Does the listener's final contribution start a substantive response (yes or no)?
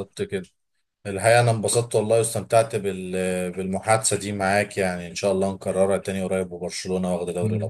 yes